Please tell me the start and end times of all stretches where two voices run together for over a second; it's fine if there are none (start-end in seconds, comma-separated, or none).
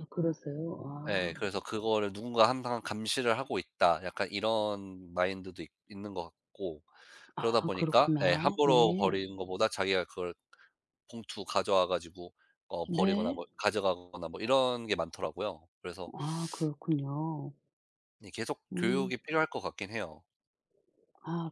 7.4-9.1